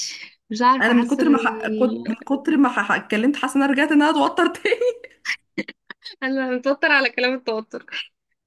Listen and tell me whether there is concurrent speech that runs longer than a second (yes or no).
yes